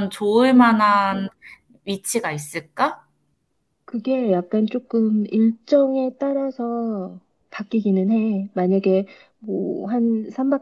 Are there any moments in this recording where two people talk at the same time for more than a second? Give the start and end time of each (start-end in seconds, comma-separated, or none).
none